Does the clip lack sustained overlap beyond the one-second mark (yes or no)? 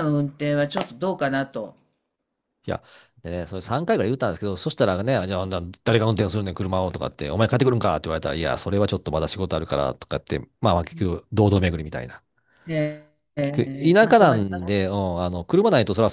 no